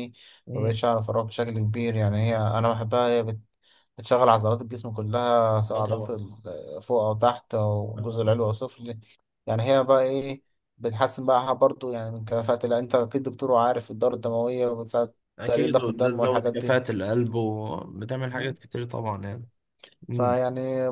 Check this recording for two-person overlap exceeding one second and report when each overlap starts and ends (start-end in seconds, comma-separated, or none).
15.4-16.6